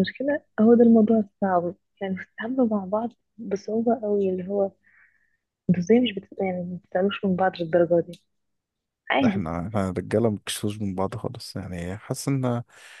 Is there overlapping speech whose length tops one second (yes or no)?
no